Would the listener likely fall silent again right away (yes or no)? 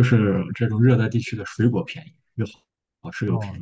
no